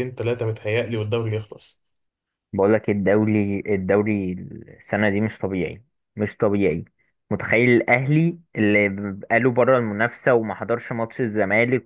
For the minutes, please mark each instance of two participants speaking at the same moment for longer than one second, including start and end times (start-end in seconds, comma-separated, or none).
none